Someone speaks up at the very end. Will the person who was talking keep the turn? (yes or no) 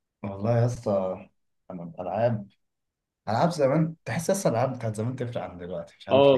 no